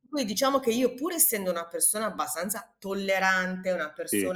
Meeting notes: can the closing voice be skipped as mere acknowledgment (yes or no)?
yes